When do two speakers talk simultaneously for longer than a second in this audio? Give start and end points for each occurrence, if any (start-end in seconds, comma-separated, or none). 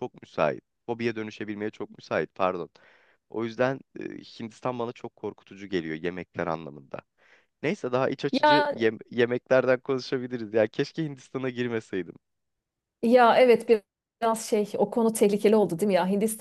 none